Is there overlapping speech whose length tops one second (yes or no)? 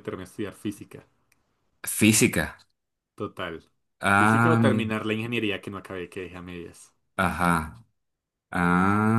no